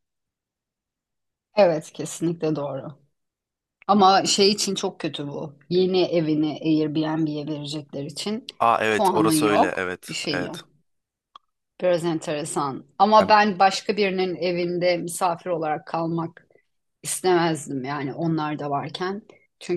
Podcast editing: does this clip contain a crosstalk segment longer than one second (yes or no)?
yes